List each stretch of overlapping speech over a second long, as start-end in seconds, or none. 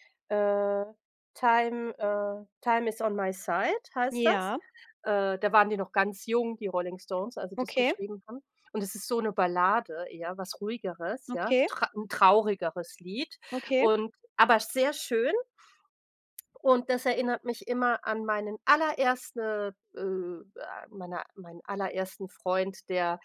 none